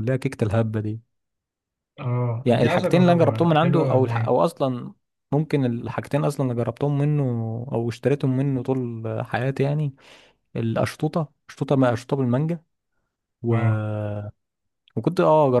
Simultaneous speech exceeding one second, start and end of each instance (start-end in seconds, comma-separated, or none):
2.5-4.3